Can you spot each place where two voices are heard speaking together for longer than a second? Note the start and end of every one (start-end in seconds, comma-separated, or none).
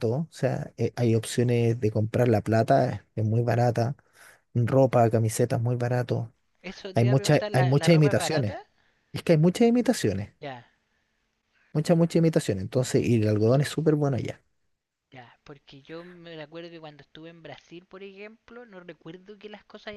6.9-8.6